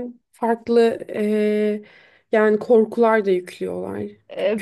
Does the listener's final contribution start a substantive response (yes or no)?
yes